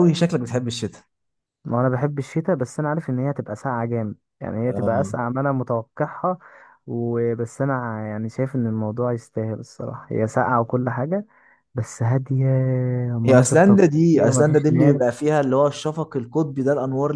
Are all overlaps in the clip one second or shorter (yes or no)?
no